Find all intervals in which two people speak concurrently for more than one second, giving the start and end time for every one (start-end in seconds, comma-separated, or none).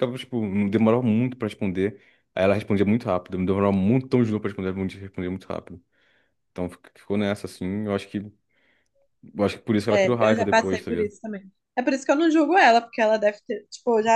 9.9-11.1